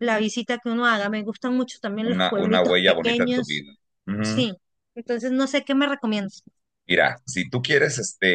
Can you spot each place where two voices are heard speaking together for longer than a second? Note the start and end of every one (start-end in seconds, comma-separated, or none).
2.0-3.6